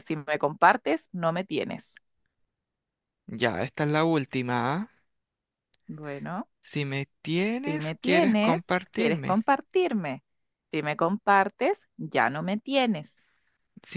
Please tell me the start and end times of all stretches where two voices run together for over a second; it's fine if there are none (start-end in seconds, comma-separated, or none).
7.6-9.4